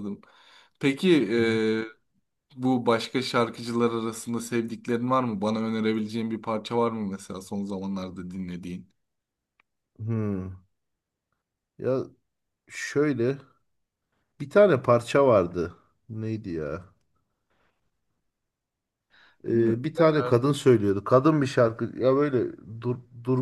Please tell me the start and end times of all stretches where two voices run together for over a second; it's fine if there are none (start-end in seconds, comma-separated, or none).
none